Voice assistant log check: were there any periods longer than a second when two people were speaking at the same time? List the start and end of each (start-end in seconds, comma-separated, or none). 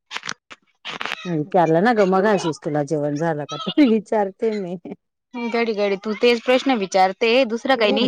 none